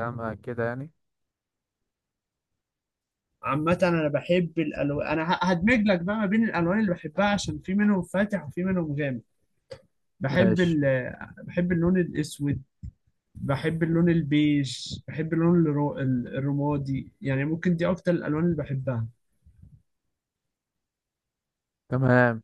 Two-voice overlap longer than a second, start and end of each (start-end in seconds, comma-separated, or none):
none